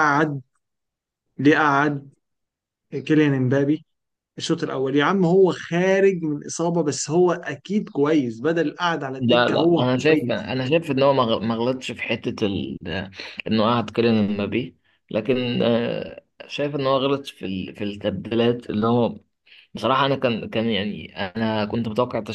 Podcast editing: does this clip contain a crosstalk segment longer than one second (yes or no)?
yes